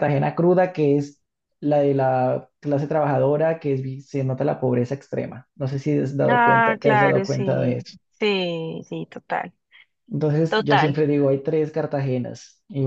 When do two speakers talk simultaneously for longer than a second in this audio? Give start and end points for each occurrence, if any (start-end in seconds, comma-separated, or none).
6.3-8.0